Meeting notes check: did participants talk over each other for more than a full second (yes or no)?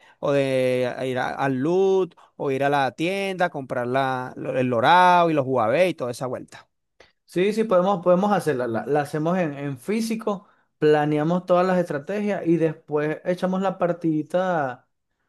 no